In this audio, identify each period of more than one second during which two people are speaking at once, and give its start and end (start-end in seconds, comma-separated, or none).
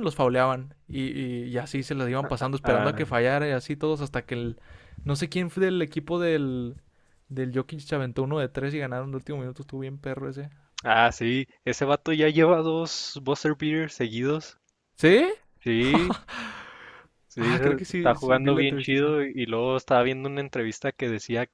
17.4-19.1